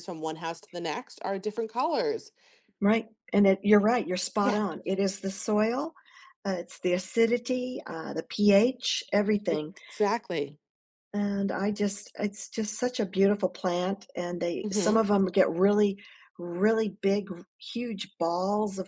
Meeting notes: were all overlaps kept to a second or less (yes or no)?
yes